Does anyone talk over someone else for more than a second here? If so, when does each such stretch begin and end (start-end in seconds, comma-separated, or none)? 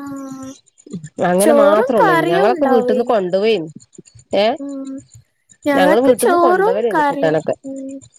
1.4-3.1, 5.8-7.5